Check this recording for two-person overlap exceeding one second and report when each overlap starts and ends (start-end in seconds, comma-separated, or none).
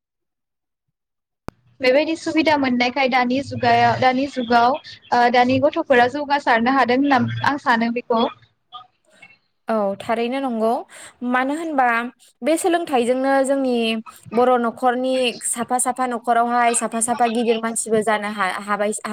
none